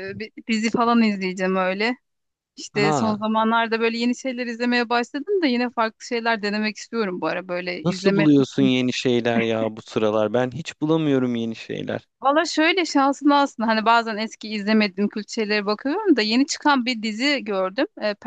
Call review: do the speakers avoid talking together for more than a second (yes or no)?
yes